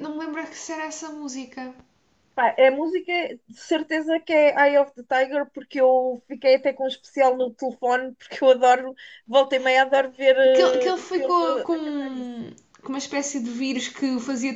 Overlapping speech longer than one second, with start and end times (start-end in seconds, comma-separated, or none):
10.5-12.3